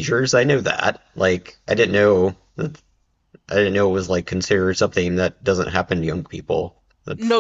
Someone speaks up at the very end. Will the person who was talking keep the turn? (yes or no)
no